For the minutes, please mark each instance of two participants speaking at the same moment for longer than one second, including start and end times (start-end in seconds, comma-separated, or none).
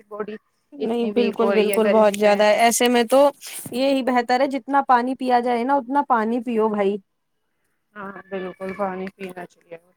0.9-2.4